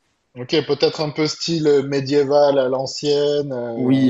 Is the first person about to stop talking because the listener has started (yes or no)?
yes